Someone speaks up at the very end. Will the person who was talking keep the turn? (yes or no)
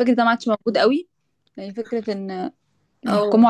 yes